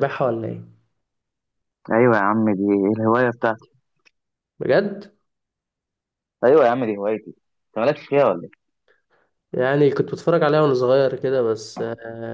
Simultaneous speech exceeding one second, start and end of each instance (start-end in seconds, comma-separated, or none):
none